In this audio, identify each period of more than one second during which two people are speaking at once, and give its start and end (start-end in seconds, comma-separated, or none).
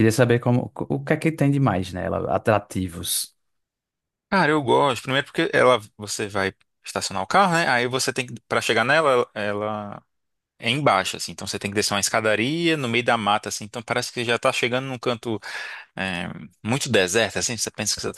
none